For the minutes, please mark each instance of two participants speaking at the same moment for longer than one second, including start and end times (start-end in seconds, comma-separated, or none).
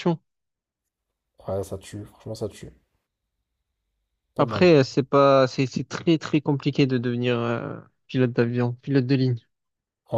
none